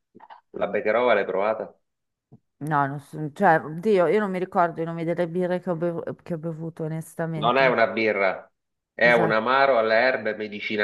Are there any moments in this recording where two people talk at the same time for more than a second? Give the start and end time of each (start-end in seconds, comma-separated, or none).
none